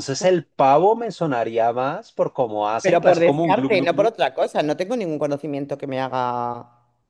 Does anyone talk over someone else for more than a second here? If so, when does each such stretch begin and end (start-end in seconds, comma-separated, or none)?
2.8-4.2